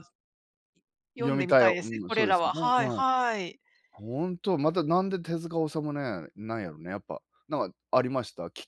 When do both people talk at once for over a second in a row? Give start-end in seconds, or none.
1.2-3.0